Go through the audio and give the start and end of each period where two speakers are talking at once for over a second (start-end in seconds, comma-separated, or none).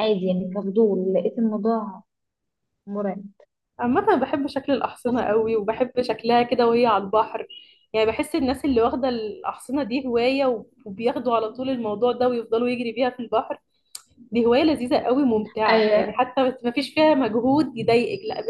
none